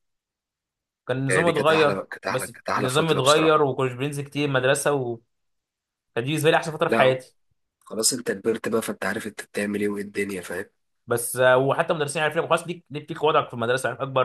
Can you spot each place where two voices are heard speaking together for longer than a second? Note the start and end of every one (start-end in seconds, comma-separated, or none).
1.3-3.6